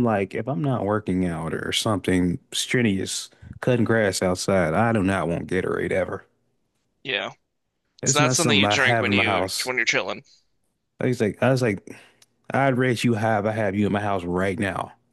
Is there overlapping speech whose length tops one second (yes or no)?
yes